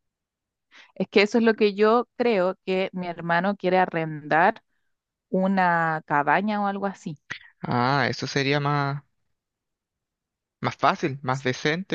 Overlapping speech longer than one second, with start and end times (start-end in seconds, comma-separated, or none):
none